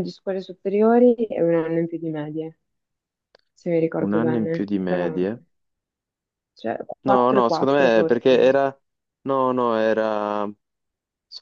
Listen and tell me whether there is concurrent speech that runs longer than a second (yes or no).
yes